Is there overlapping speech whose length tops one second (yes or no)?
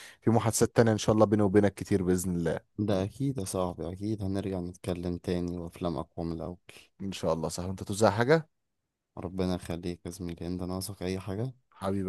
no